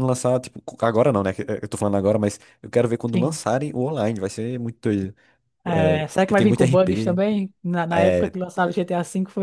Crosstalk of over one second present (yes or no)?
yes